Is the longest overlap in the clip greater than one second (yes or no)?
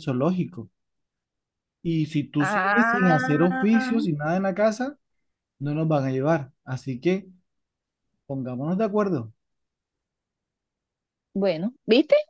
yes